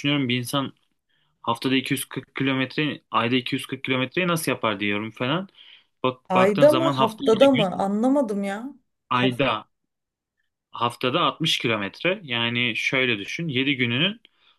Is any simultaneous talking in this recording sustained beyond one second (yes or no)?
yes